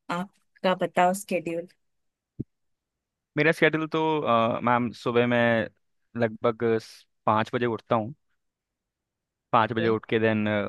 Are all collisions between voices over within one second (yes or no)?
yes